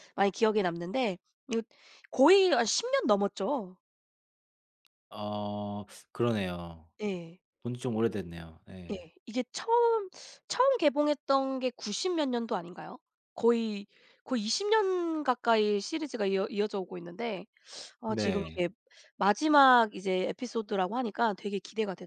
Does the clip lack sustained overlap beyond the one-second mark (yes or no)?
yes